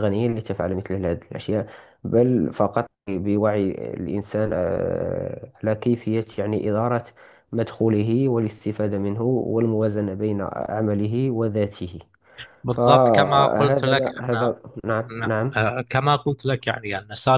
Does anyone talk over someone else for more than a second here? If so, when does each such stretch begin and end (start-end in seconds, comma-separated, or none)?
12.7-14.5